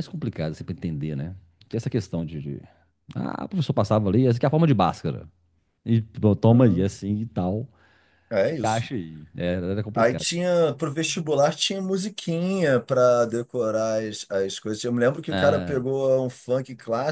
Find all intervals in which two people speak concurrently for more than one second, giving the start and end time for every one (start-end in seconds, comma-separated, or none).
none